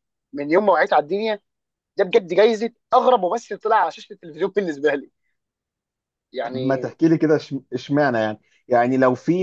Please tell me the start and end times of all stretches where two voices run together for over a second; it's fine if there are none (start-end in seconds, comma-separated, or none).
none